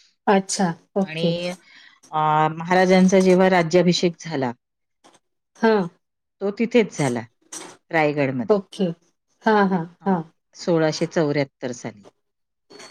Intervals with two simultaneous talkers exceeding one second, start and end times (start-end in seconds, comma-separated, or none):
none